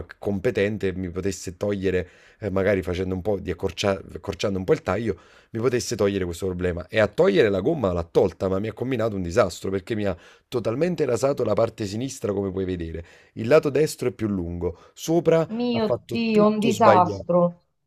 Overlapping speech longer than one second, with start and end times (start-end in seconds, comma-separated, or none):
15.5-17.3